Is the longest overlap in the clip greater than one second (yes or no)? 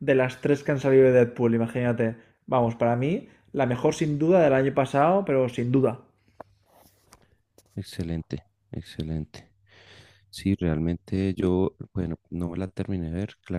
no